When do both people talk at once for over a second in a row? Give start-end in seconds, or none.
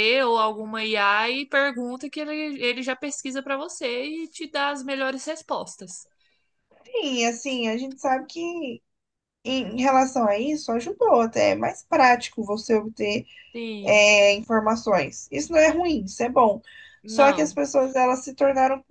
none